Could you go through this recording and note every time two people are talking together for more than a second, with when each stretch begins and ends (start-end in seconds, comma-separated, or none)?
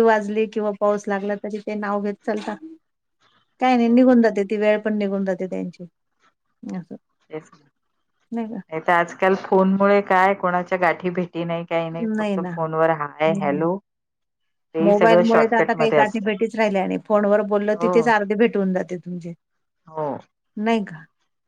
14.8-16.3